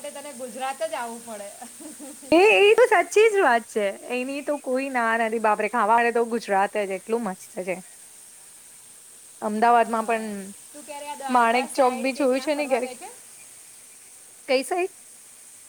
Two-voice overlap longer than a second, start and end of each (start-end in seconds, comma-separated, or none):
11.3-12.9